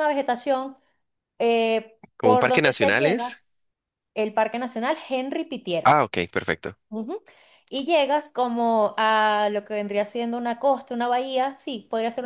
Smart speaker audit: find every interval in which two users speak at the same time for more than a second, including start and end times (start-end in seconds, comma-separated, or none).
2.2-3.4